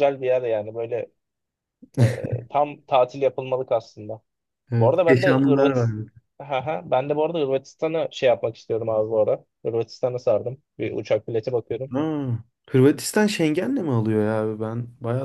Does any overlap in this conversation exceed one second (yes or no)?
yes